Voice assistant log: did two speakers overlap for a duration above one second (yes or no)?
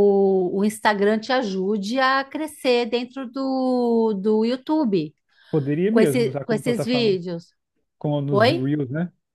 yes